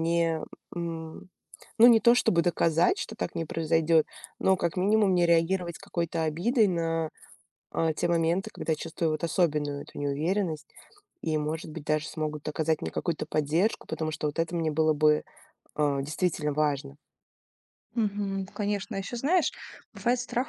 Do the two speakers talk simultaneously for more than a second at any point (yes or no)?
no